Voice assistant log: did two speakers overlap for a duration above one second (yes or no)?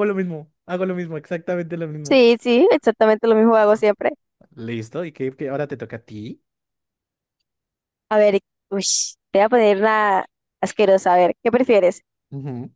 no